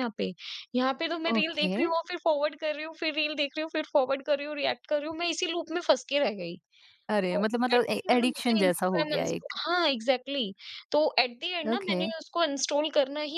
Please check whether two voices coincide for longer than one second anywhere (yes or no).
yes